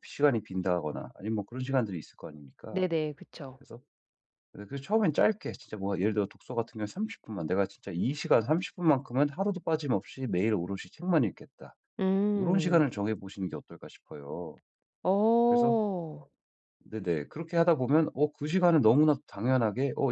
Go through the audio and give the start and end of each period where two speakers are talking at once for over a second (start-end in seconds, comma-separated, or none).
none